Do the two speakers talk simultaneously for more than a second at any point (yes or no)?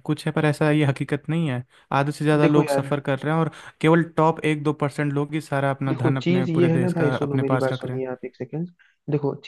yes